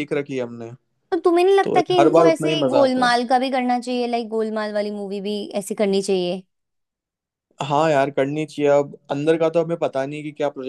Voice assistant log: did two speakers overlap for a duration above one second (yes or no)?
yes